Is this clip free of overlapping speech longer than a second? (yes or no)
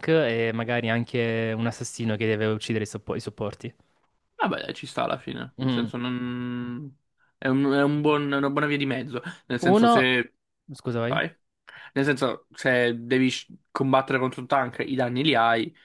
yes